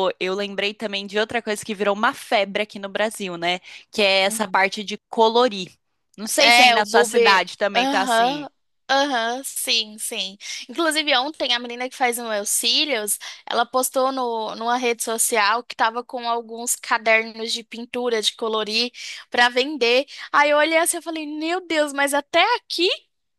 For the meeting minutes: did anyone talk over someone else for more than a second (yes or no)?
yes